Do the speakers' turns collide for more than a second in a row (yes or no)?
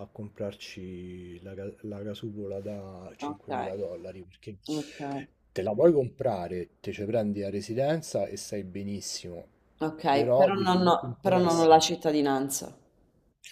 yes